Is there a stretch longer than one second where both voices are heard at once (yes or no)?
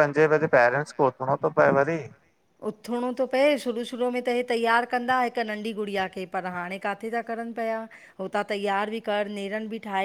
no